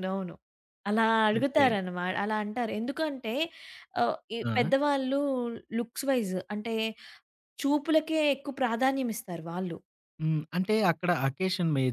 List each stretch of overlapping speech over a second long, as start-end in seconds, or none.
none